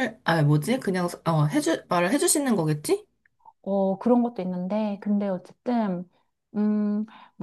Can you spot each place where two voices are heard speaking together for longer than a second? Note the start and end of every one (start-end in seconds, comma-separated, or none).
none